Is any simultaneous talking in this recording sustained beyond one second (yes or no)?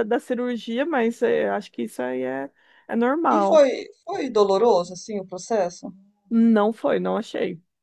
no